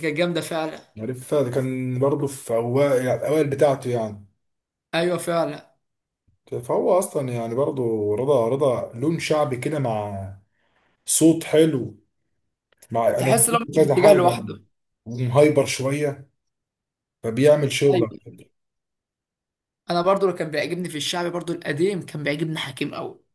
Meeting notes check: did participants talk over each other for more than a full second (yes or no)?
yes